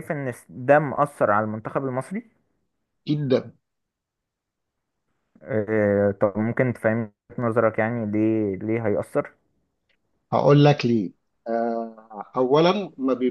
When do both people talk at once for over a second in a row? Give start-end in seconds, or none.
none